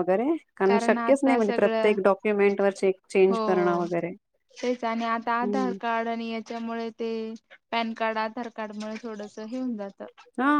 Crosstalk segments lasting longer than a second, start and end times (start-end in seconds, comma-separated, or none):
0.7-1.9